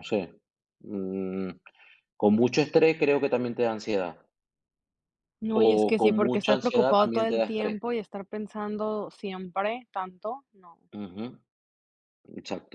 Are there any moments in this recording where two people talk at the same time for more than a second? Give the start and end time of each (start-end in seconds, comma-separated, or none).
5.5-7.8